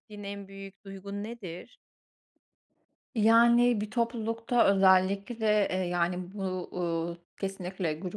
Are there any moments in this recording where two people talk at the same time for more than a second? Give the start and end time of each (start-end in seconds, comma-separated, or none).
none